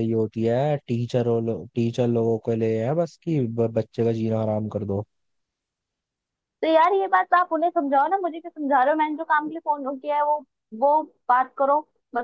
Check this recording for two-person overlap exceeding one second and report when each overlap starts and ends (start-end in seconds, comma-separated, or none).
none